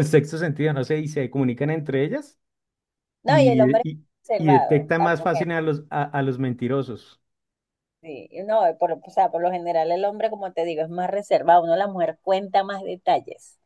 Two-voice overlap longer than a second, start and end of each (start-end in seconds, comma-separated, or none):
3.3-5.5